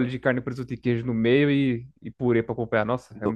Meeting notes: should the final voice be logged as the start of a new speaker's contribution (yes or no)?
yes